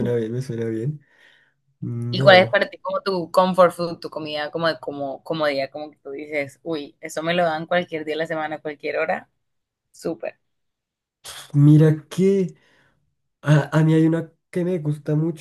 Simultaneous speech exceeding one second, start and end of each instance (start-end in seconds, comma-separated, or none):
none